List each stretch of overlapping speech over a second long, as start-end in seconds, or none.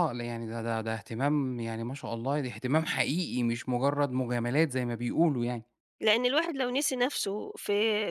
none